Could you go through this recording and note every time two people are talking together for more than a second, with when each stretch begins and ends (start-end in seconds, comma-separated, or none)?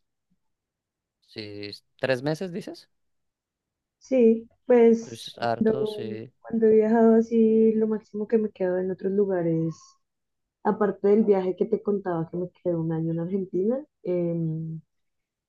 5.0-6.3